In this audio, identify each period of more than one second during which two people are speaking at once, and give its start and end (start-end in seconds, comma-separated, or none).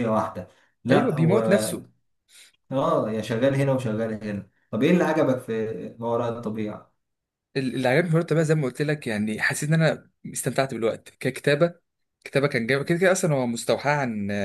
none